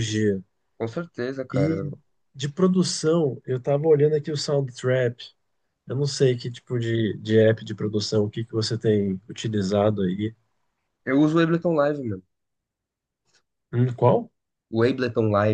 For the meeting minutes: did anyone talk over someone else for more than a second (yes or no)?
no